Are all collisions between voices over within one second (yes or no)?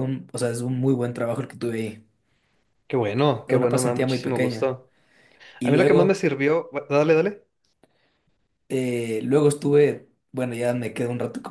no